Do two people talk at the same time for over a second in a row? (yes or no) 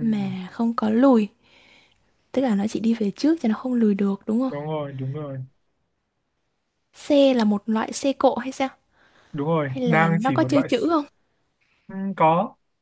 yes